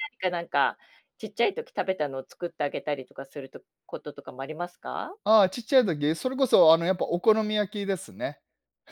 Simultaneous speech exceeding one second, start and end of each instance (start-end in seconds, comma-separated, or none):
none